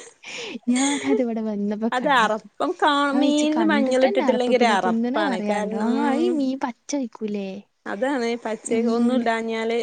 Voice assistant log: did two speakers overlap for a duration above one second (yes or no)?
yes